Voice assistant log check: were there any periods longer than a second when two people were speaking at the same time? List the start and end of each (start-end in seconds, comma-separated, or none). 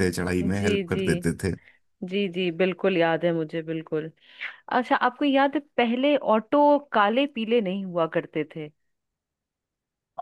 none